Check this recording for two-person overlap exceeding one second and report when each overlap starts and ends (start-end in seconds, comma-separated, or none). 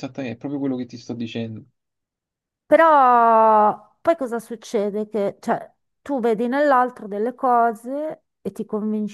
none